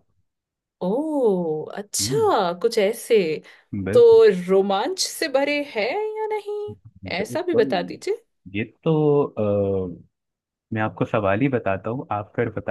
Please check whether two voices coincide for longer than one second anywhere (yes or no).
no